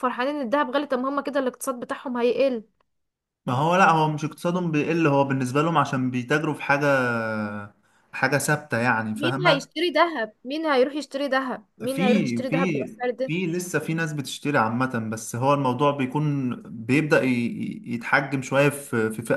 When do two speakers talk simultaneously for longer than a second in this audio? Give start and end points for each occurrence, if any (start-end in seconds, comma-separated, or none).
11.9-13.3